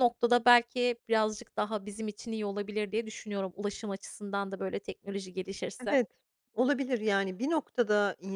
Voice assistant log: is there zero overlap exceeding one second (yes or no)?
yes